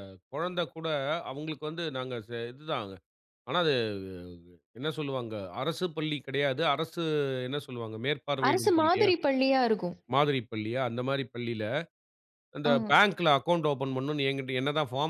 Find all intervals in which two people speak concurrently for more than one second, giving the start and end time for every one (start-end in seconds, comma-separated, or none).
none